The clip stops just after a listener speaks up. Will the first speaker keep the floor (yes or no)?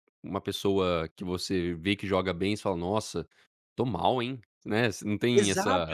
no